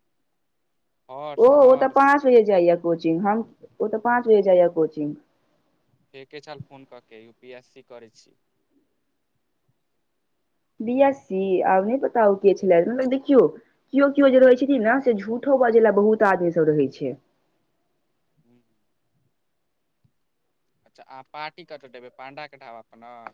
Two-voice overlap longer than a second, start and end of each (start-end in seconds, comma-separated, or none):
none